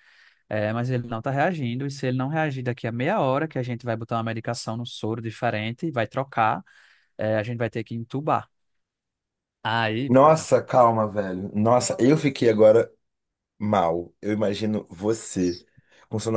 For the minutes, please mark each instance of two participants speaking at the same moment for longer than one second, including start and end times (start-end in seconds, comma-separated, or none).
none